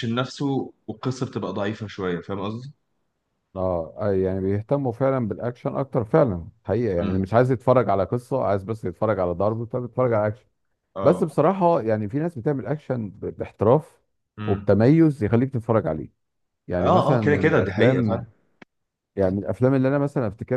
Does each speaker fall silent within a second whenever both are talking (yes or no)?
no